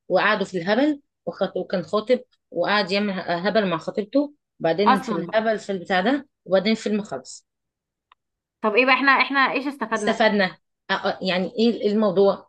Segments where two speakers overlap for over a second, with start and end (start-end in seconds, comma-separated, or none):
none